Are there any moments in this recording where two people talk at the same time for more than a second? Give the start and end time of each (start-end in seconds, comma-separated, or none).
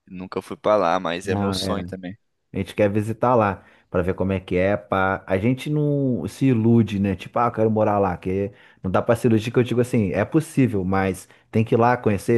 none